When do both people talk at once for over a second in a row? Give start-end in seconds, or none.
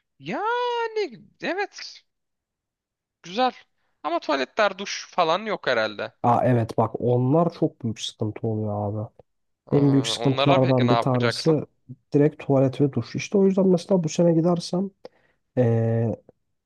9.7-11.5